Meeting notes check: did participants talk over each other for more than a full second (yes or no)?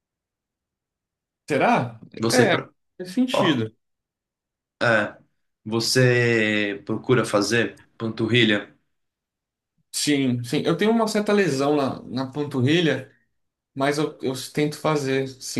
no